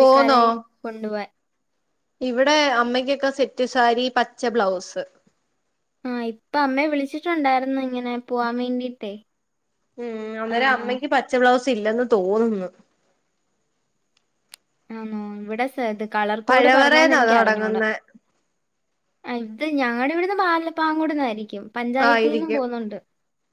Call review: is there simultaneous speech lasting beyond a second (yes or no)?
yes